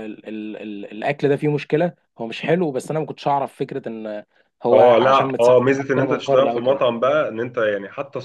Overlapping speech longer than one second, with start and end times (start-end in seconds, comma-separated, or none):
4.7-6.8